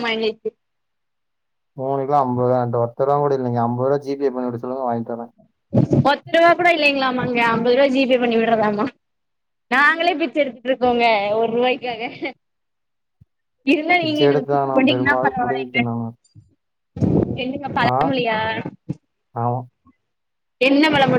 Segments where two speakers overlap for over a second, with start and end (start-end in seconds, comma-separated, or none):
14.0-15.8